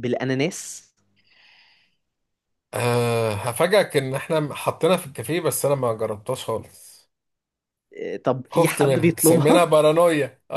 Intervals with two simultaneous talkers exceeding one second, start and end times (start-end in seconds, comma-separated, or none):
8.5-9.7